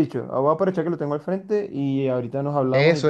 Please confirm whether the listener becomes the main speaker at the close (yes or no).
yes